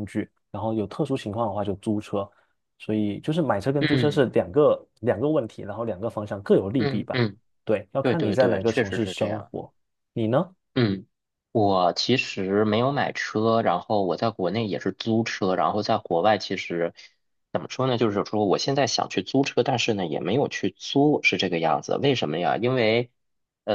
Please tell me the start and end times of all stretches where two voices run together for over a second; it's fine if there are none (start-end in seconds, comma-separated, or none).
8.0-9.5